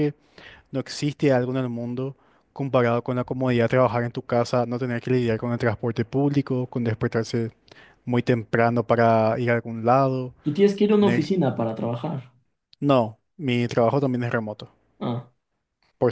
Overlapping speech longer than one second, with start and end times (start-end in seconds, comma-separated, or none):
none